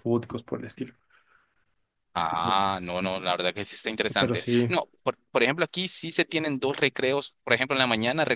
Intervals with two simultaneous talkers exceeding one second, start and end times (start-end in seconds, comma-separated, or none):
none